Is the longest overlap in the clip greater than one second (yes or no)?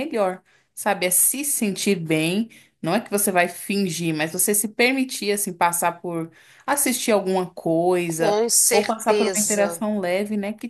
yes